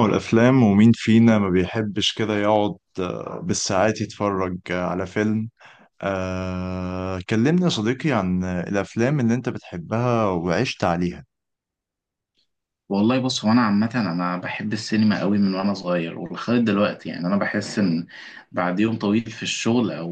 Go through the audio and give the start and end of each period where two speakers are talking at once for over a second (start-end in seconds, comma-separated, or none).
none